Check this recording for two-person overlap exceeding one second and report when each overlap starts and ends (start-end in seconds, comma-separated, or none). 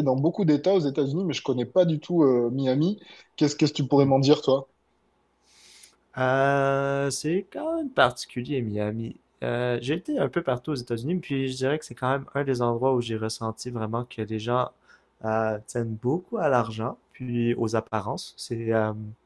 none